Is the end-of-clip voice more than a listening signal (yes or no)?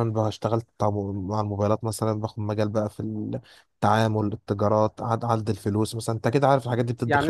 yes